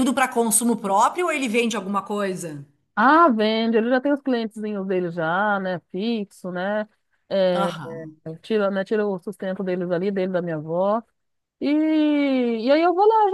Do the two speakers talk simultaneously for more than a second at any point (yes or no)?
no